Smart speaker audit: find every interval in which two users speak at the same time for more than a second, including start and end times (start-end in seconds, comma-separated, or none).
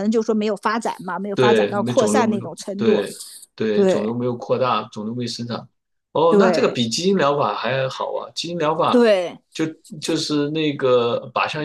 1.3-3.0